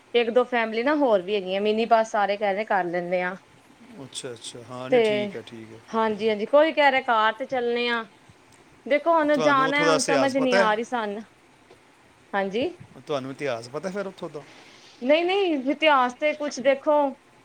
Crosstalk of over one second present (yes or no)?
yes